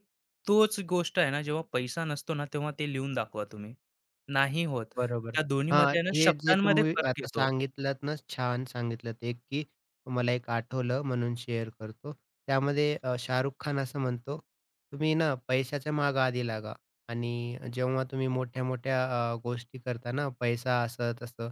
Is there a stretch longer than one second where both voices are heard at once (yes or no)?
yes